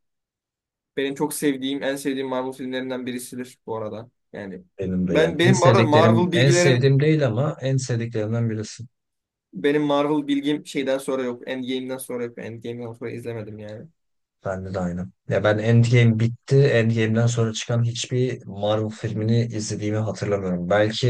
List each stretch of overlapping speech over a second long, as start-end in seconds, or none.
5.1-6.9